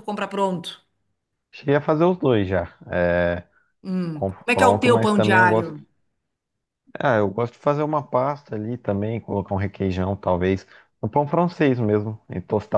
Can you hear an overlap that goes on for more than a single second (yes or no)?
yes